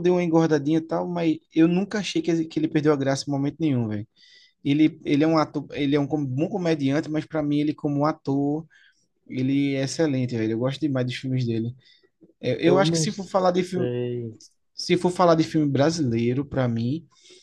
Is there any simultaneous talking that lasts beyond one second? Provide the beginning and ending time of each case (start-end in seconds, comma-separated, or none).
12.6-13.9